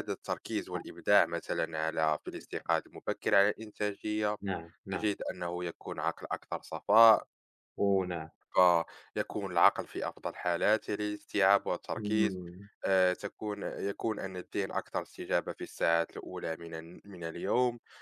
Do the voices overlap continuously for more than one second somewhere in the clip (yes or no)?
no